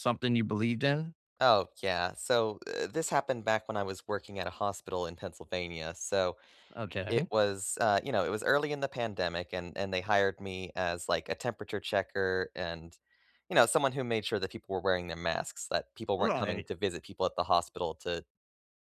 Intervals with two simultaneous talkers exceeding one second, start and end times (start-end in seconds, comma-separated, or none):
none